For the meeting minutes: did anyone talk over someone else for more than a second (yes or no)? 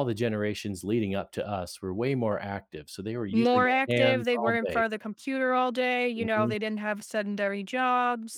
yes